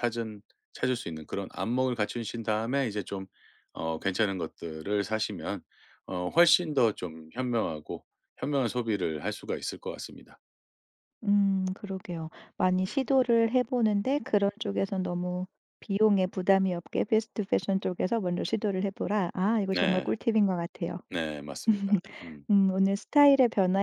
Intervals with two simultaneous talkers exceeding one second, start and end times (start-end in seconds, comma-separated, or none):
none